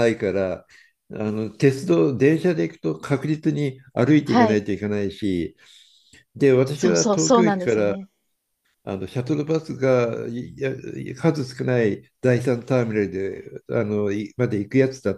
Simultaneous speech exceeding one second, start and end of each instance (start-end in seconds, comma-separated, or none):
6.7-8.0